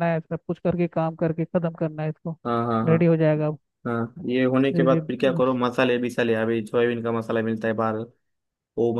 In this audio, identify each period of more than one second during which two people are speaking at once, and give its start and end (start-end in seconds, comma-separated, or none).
none